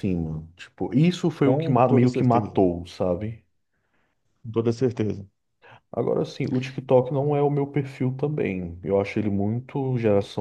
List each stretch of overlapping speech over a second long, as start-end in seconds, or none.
1.4-2.6